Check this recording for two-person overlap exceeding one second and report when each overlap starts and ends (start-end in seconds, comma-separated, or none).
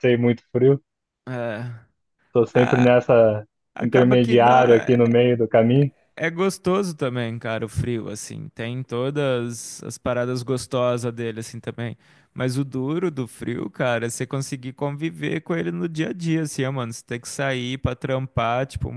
3.8-5.2